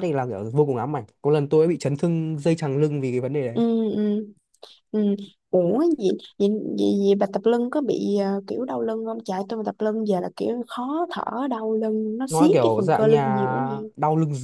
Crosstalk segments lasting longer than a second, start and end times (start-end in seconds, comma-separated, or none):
12.3-13.5